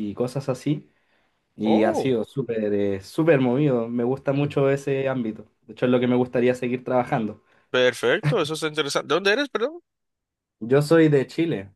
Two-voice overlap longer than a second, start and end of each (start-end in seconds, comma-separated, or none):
none